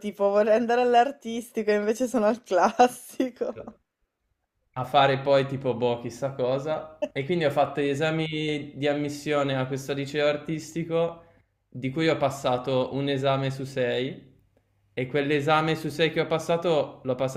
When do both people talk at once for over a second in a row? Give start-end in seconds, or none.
none